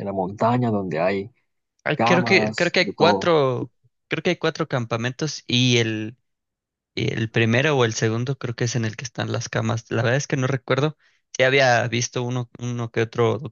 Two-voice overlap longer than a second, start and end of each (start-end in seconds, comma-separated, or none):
1.9-3.3